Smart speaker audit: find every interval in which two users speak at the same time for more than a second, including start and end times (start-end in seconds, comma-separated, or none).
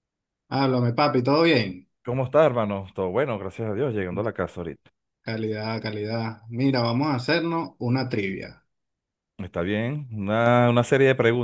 none